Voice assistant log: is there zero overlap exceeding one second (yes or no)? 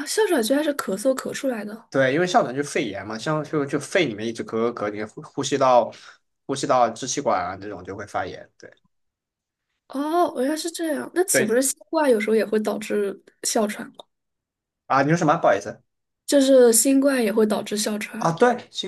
yes